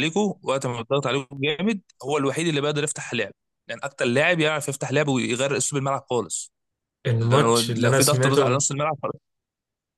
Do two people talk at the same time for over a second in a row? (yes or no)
yes